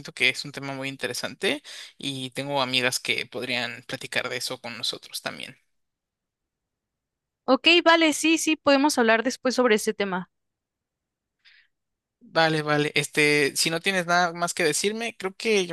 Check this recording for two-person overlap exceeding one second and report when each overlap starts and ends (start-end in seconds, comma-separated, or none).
none